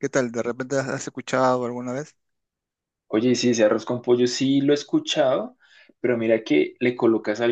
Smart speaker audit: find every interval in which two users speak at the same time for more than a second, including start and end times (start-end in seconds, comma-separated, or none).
none